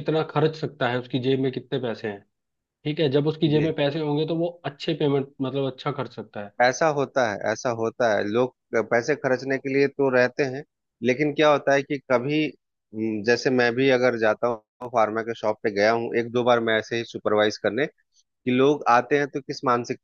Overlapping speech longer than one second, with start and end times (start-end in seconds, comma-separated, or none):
none